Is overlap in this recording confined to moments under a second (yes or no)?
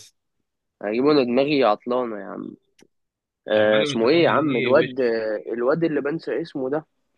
no